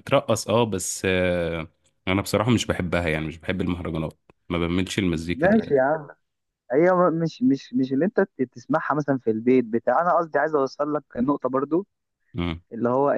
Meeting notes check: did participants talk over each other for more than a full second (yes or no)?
no